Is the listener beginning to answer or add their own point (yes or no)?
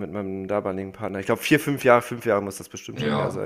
yes